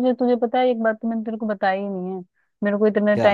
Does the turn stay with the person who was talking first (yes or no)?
yes